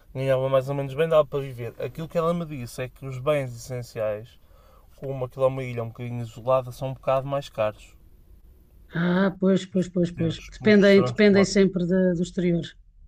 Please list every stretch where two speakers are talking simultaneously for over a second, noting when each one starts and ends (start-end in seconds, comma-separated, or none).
10.2-11.6